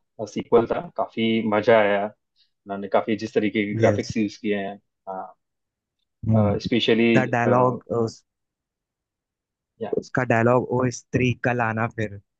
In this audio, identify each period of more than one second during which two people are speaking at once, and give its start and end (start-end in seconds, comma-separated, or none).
none